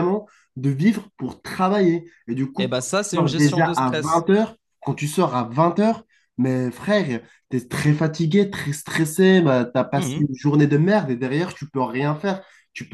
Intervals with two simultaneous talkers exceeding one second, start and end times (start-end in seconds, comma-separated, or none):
2.6-4.2